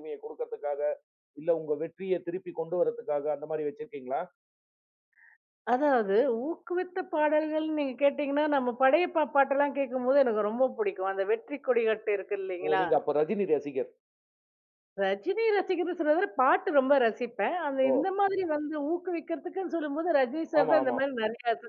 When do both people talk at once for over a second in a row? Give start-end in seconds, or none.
none